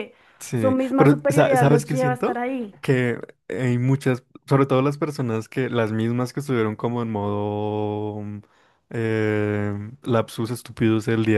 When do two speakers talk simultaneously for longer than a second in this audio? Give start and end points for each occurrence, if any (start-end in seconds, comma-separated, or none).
0.5-2.4